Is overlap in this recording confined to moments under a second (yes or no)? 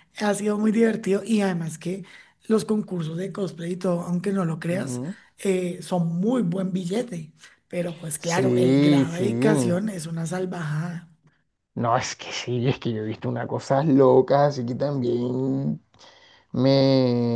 no